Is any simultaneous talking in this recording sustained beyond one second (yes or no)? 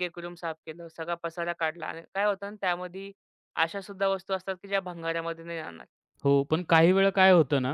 no